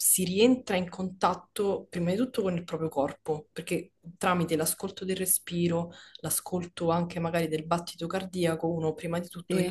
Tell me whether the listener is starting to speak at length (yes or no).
no